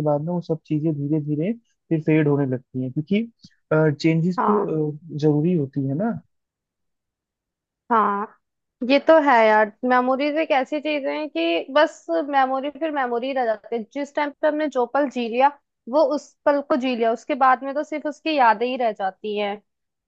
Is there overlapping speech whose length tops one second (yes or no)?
no